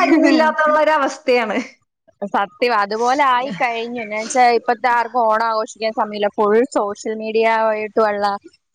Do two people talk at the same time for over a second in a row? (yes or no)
no